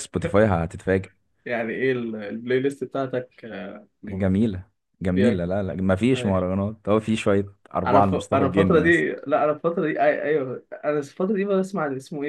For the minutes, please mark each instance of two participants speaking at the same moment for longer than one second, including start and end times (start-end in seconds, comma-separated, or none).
7.8-9.1